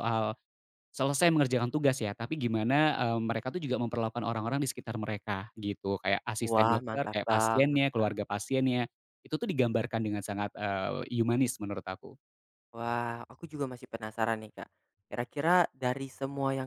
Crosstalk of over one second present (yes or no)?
yes